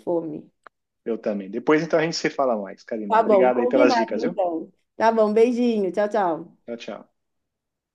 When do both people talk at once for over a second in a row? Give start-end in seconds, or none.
3.1-4.4